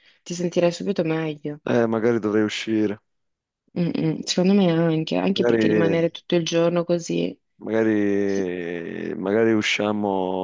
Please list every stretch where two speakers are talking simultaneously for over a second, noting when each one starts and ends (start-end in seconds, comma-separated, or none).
none